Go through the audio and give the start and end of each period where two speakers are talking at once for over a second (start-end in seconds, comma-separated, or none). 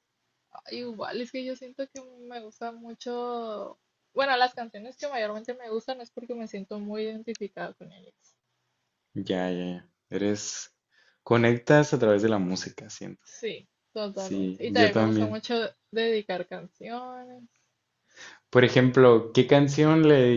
14.1-15.4